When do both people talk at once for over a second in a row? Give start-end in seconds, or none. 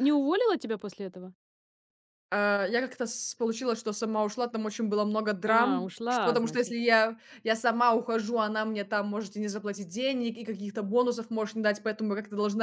5.5-6.8